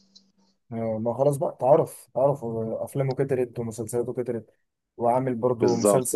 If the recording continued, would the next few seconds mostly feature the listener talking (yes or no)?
yes